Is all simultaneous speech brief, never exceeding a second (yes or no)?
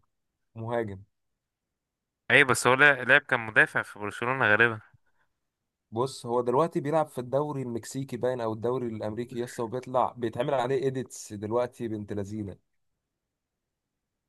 yes